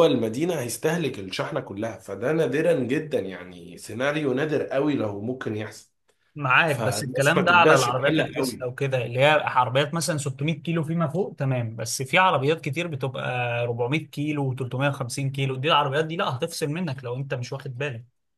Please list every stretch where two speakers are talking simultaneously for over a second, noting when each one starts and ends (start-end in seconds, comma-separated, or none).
6.7-8.7